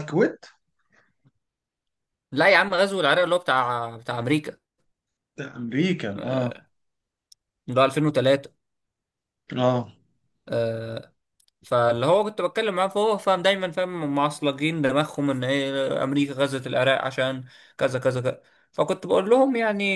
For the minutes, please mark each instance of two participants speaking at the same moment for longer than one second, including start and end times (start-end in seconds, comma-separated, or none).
none